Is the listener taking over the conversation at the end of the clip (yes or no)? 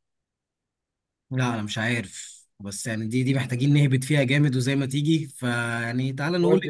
no